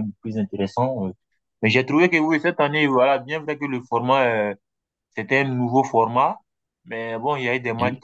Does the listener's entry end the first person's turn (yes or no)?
no